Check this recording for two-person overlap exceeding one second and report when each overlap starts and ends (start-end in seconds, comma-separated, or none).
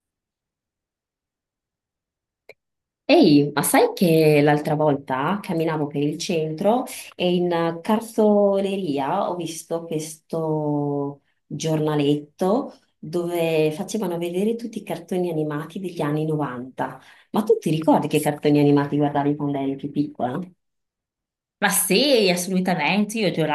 none